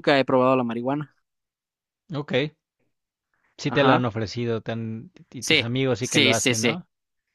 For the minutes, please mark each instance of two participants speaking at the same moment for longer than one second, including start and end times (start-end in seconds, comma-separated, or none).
5.4-6.8